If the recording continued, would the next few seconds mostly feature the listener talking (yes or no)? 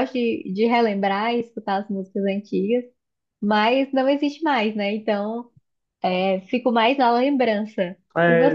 yes